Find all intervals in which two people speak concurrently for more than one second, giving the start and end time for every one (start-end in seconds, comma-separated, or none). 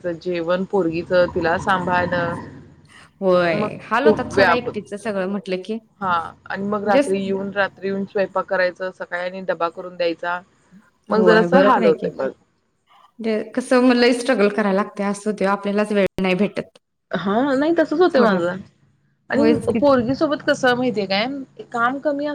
3.2-4.7